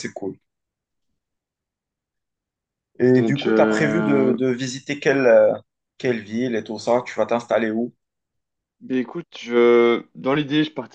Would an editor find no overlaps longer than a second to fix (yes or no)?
no